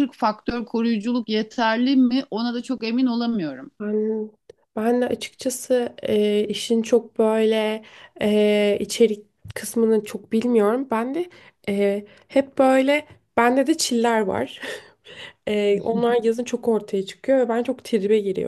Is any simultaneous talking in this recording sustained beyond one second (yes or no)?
no